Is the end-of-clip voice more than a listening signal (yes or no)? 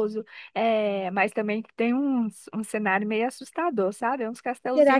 no